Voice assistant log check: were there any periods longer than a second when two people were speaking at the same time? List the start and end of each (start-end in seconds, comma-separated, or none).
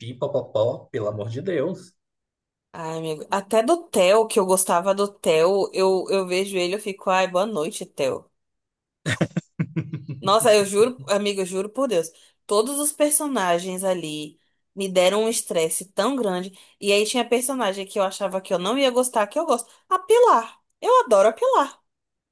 none